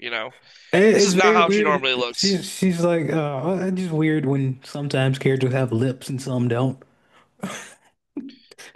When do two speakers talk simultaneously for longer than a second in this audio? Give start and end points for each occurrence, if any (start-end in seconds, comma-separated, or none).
0.9-2.4